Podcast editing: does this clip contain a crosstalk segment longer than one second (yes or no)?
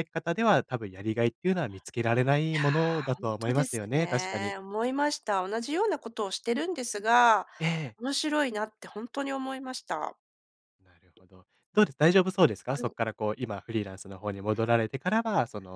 yes